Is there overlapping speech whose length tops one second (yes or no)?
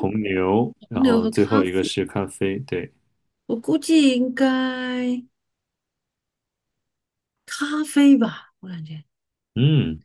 yes